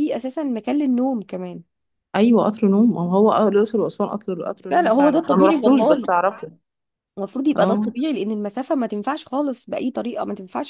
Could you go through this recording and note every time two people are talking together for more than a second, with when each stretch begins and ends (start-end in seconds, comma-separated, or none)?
4.7-6.1